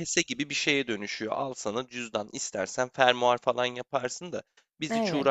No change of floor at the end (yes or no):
yes